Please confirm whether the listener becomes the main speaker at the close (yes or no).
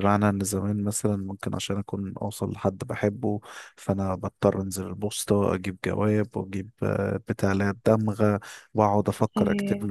no